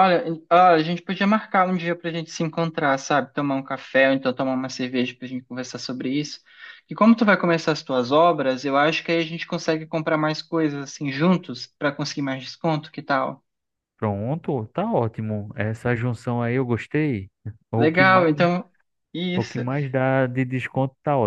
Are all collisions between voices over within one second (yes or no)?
yes